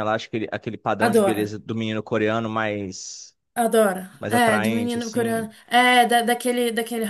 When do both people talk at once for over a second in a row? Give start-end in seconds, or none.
4.2-5.5